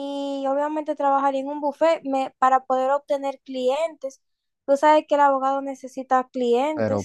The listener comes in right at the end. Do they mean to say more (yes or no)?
yes